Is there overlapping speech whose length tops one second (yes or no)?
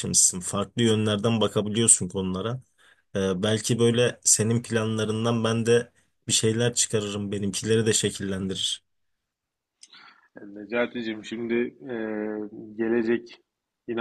no